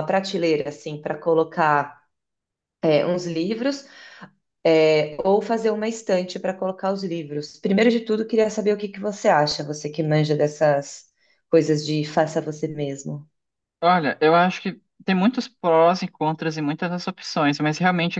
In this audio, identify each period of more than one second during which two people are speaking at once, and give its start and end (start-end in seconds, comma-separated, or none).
none